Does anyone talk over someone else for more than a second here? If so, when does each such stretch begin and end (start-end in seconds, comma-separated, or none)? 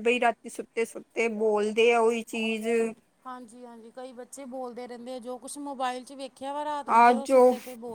none